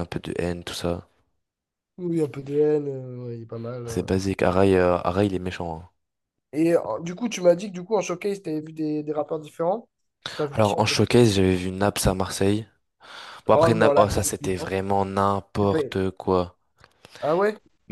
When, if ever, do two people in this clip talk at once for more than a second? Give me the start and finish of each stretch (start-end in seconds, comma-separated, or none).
13.5-14.7